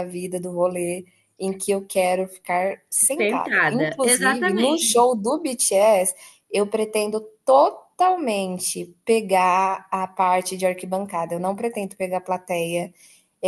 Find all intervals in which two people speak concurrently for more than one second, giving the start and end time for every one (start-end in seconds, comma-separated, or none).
3.1-5.0